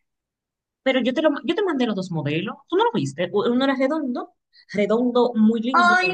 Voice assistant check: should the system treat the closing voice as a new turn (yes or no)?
yes